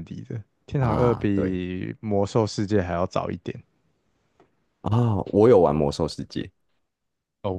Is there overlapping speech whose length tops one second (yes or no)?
no